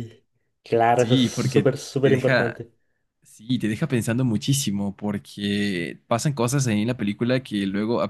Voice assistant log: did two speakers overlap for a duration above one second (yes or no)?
yes